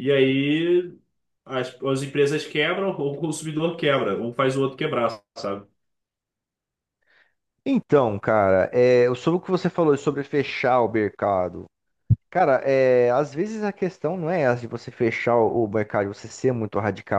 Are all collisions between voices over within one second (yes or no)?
yes